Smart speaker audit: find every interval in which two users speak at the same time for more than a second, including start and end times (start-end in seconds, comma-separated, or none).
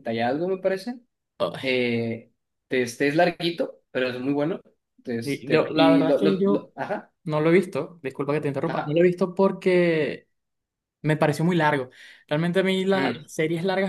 5.2-6.7